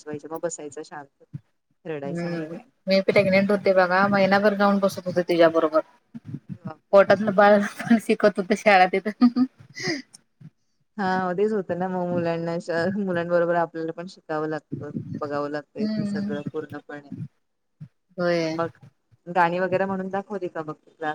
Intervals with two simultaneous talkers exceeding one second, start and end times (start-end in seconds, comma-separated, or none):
none